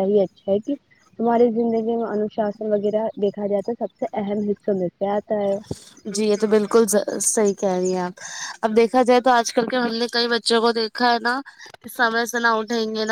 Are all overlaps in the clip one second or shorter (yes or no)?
yes